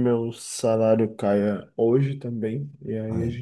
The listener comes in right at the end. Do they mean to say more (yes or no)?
no